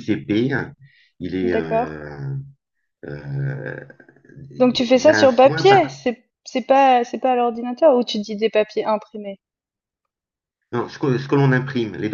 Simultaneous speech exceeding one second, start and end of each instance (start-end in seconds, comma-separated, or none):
4.6-5.9